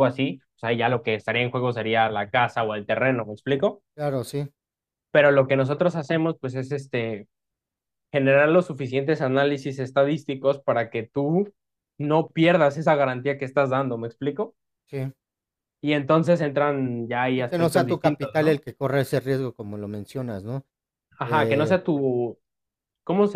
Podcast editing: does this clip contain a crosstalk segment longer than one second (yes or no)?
yes